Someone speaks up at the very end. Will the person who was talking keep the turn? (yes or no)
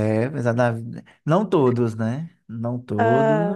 yes